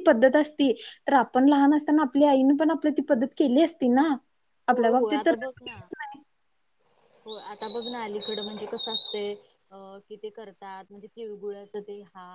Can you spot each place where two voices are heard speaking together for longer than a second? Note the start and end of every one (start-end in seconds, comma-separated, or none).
none